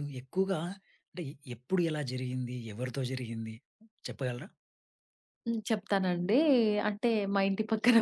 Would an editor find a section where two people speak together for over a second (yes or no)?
no